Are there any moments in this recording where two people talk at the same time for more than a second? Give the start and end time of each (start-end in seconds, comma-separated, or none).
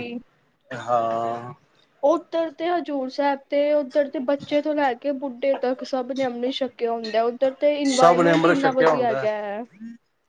8.0-9.2